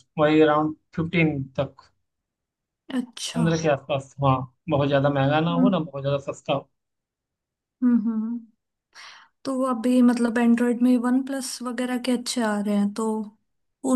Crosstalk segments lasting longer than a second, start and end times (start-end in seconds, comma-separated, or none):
none